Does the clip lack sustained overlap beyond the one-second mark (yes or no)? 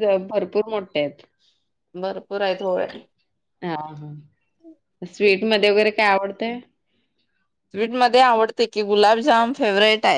yes